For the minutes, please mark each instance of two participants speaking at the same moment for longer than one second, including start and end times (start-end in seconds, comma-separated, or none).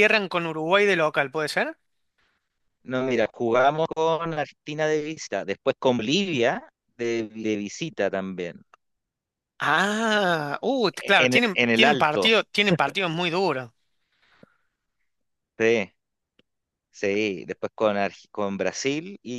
11.0-12.3